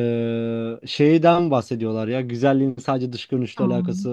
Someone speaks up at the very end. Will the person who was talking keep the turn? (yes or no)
yes